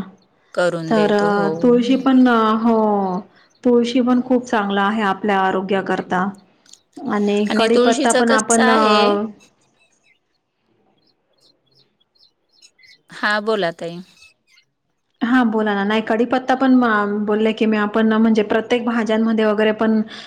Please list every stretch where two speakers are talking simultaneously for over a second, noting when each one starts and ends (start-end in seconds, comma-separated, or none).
7.7-9.1